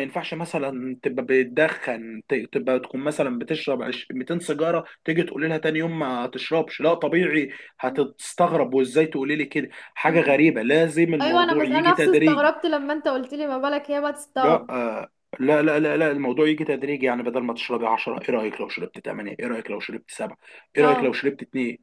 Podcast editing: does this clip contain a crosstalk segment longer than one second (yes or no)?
yes